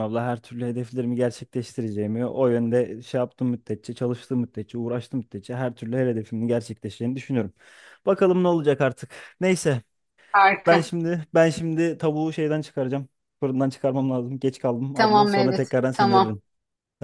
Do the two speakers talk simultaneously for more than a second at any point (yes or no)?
yes